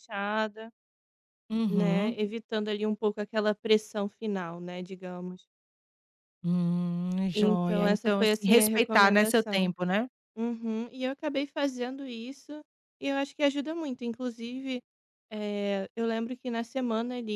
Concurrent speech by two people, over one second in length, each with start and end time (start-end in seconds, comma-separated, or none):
7.3-9.7